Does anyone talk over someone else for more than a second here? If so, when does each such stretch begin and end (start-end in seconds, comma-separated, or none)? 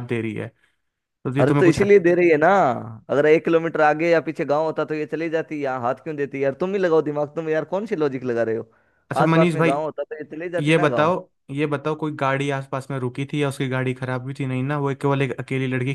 none